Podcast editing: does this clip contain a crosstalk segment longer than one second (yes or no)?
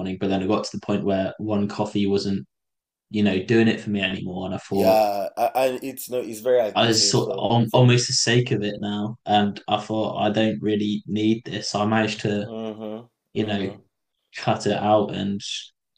yes